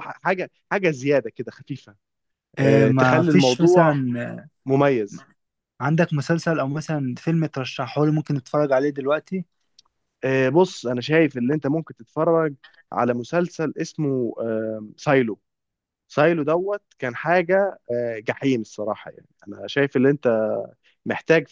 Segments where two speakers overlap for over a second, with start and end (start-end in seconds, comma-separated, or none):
2.6-4.0